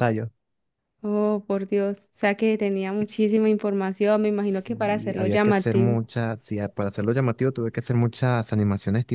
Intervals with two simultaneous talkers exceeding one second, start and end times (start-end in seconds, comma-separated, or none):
4.4-6.0